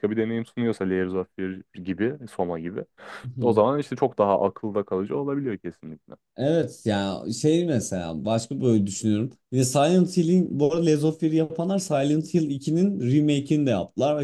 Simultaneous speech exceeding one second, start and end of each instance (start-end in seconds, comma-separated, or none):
none